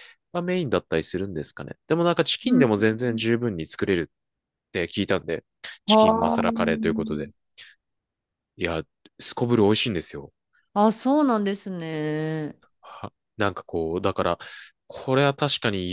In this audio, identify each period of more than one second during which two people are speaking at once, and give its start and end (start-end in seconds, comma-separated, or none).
5.9-7.2